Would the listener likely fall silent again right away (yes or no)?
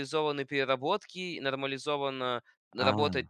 yes